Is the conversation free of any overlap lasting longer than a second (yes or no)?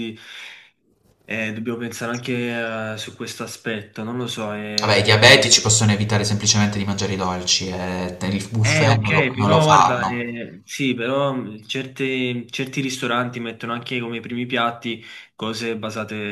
no